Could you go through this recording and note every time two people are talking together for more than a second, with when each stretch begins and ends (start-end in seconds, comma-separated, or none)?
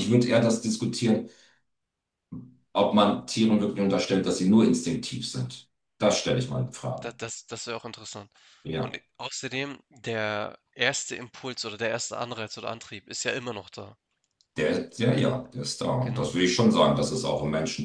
none